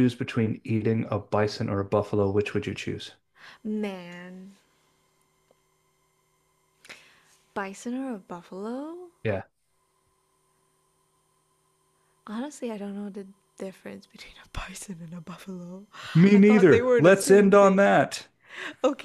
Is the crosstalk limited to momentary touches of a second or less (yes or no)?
no